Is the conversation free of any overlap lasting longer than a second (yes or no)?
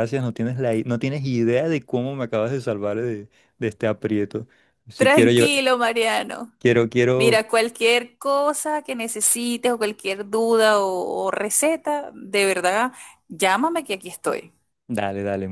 yes